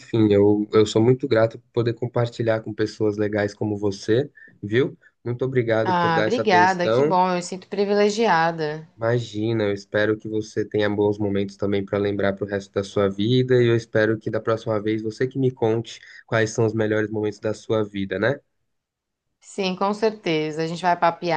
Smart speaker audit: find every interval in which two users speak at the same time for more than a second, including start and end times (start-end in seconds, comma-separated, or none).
5.8-7.2